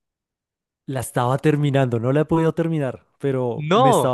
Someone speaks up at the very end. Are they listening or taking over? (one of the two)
listening